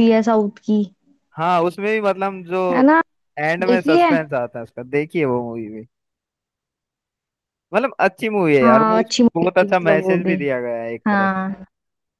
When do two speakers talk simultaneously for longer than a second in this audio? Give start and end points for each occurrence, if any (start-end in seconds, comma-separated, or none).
8.6-10.4